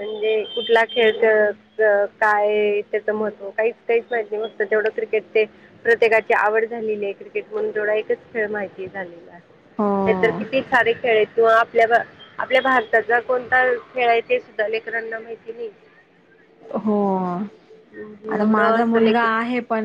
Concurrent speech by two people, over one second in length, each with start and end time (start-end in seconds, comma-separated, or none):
18.0-19.3